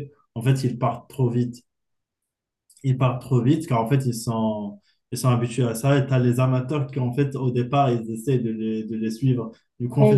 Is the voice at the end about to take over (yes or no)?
yes